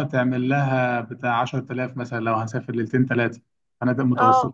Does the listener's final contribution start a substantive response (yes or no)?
yes